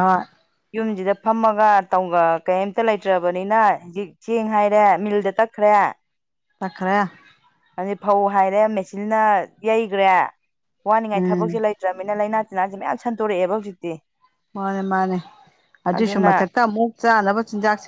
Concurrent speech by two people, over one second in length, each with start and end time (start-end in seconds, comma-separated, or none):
none